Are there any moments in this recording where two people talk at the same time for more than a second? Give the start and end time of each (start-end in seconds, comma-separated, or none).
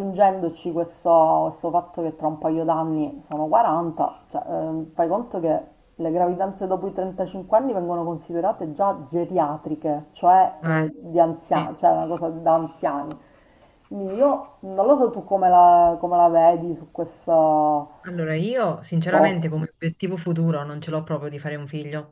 none